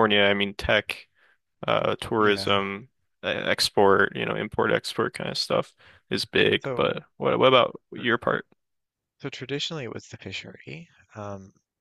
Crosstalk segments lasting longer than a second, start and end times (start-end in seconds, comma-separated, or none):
none